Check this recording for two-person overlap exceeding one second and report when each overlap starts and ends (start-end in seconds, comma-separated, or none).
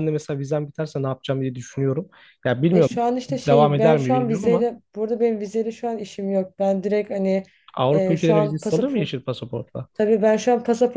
2.7-4.7, 7.9-9.1